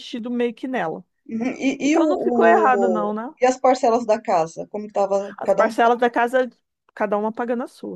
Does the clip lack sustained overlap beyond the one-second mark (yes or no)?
no